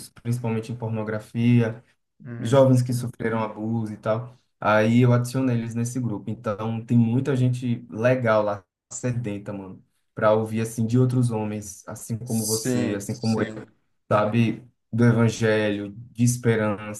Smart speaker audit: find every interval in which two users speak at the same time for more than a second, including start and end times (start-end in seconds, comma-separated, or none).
12.2-13.5